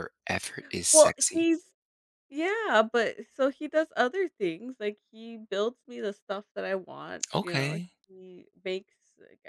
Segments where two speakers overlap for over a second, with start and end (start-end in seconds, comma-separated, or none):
none